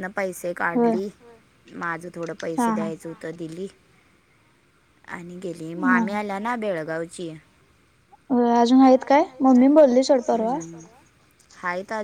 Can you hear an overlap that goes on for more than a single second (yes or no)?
no